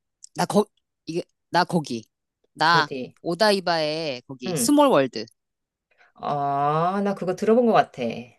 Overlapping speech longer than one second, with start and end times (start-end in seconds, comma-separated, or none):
none